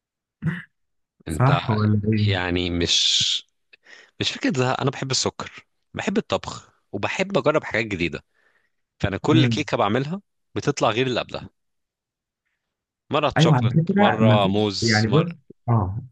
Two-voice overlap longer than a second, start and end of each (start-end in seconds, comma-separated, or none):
13.4-15.3